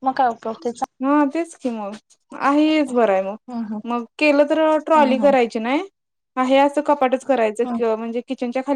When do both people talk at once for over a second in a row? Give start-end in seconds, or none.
none